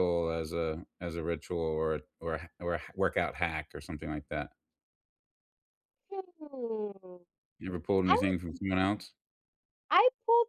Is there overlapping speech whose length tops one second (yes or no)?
no